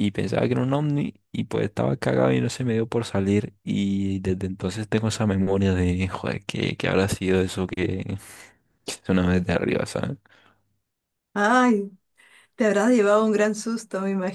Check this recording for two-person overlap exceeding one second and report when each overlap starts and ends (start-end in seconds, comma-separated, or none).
none